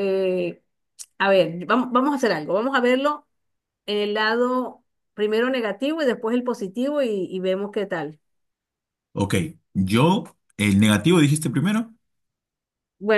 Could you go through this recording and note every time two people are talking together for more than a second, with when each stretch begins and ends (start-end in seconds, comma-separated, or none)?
none